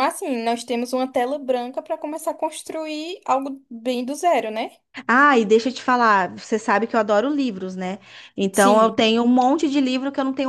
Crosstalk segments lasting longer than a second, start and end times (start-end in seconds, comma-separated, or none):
none